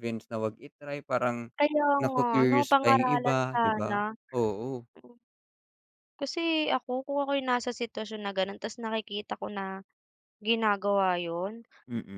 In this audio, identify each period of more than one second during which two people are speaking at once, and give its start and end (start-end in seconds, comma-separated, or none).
2.0-4.0